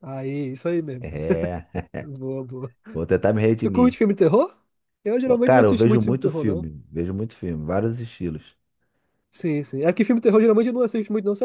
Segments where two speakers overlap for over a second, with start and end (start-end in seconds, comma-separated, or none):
5.4-6.7